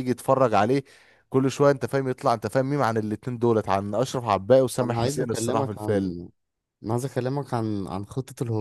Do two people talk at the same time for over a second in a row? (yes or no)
yes